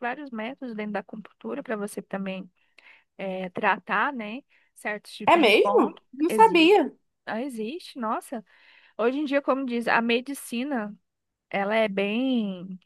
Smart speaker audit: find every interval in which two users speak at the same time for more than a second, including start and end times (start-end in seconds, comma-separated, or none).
5.2-6.8